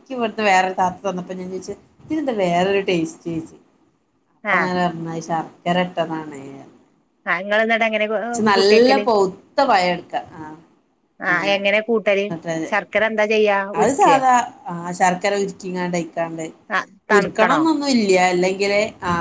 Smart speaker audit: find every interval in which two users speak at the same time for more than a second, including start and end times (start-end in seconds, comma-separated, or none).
none